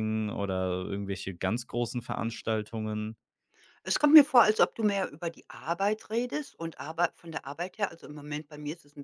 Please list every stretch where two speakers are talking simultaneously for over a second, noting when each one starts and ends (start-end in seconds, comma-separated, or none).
none